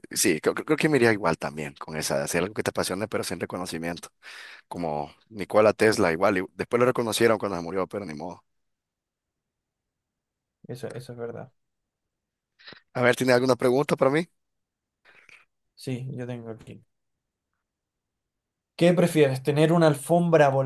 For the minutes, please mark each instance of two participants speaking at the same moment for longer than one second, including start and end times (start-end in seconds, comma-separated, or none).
none